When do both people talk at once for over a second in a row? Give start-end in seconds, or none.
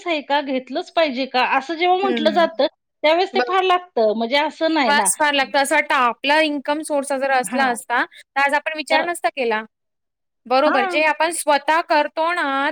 none